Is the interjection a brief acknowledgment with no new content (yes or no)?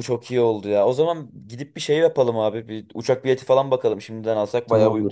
no